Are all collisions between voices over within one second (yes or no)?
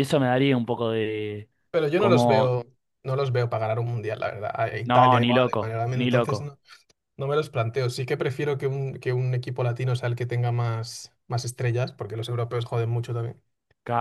no